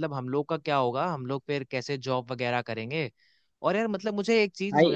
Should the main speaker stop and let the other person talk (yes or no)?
no